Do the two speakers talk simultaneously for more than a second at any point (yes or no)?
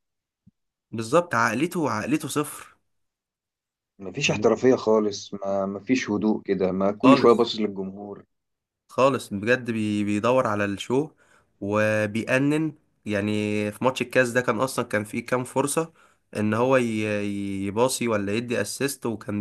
no